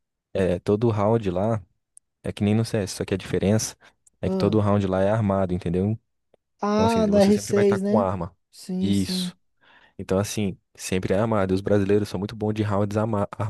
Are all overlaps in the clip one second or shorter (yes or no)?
no